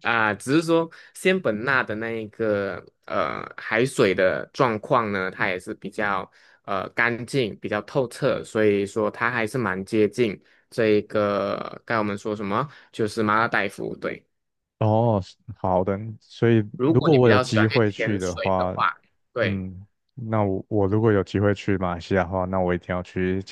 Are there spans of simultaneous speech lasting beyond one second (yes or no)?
yes